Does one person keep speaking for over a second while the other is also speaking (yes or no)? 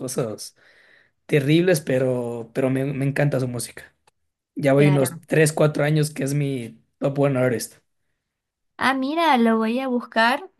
no